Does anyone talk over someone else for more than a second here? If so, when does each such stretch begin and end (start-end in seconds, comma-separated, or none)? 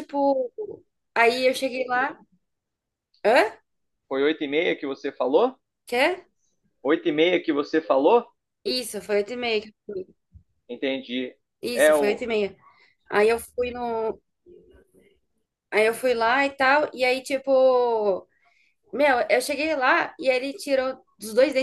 none